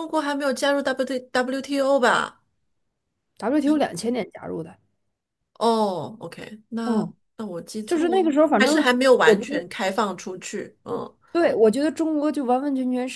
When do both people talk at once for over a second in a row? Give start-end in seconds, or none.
7.8-9.7